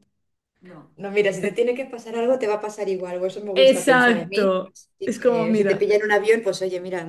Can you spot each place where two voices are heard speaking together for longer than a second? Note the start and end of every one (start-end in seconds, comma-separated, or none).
3.5-5.9